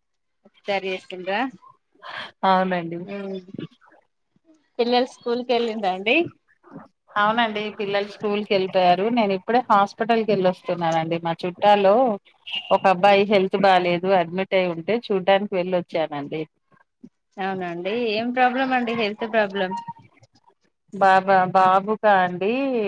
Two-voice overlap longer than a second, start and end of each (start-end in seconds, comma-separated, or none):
none